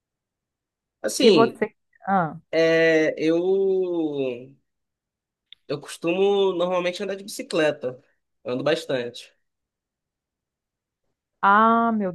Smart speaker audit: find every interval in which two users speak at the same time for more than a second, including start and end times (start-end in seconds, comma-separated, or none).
none